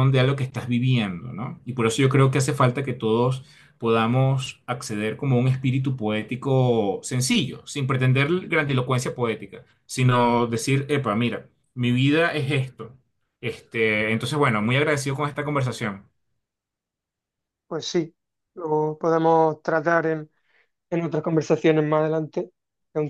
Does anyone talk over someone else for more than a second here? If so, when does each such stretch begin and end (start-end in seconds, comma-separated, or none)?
none